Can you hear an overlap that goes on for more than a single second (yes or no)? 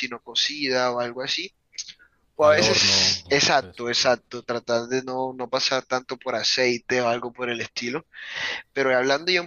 yes